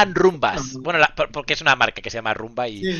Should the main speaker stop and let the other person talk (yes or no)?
yes